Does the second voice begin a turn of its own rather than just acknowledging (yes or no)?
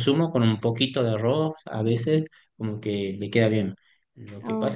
no